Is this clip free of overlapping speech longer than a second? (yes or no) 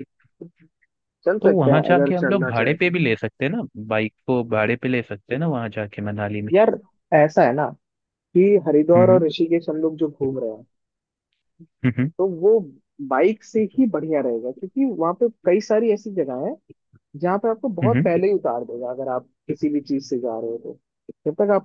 no